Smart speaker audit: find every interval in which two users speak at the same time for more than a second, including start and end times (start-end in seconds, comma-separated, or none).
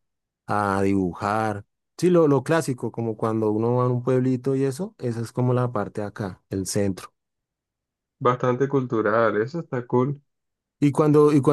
none